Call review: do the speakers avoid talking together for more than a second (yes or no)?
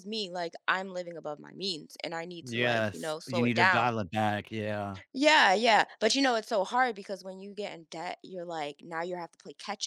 no